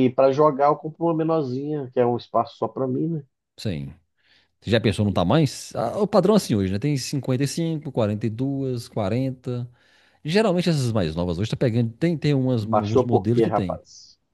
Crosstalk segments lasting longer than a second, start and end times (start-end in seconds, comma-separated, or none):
12.6-13.8